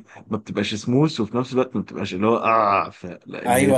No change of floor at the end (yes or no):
no